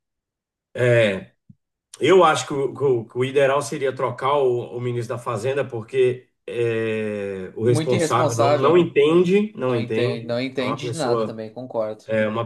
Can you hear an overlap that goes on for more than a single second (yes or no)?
yes